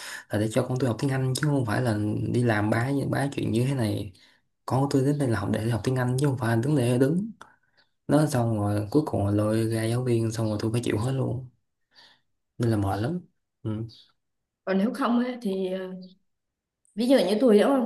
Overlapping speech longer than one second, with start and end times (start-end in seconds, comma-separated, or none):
none